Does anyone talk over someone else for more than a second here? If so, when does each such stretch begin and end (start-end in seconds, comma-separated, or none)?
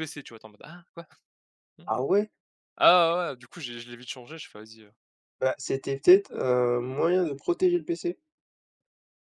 none